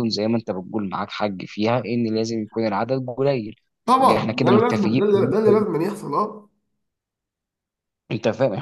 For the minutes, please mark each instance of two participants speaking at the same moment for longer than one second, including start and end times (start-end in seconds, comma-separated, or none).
4.0-5.6